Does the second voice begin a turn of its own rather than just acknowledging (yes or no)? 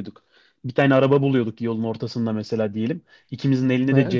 no